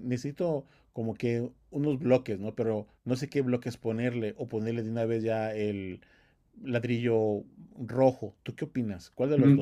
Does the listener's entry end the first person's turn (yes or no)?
yes